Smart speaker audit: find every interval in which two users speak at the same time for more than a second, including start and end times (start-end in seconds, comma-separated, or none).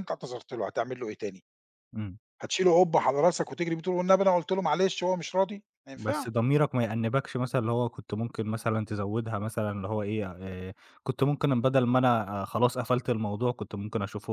none